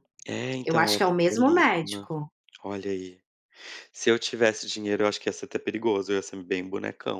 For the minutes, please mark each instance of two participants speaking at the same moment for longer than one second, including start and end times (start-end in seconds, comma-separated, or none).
0.6-2.1